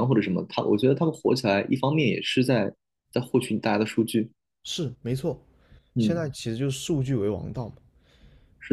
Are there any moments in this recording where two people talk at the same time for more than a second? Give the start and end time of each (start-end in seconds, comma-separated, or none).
none